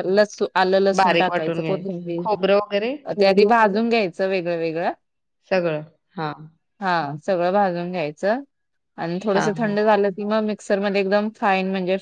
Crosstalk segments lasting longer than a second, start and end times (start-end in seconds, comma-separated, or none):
1.0-2.2